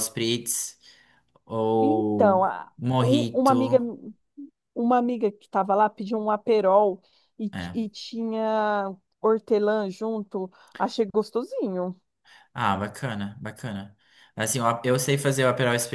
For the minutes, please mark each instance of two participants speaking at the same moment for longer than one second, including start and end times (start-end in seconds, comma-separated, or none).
1.8-3.8